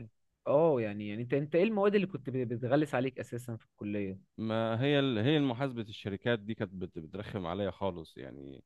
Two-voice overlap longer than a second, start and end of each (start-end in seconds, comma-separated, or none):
none